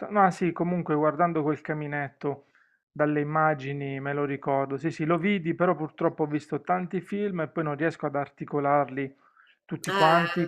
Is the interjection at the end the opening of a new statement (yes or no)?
no